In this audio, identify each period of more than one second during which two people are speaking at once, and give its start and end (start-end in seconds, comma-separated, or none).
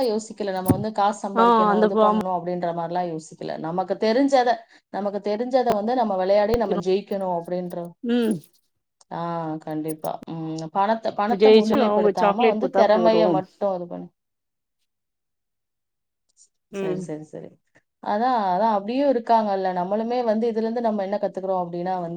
11.4-13.2